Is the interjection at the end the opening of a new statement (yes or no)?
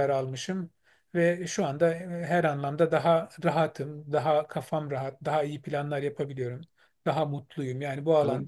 no